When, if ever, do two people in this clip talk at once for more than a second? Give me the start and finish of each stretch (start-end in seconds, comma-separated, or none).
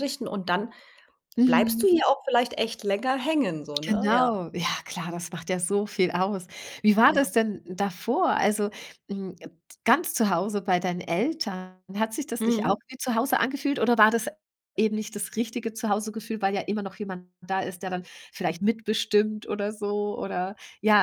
none